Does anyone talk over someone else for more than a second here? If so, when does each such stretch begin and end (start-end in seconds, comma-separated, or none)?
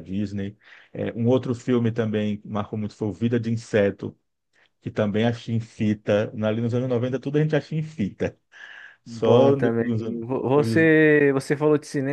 9.1-10.9